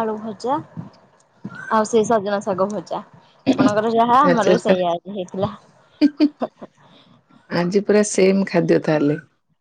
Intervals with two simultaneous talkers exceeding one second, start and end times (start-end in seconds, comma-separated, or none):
none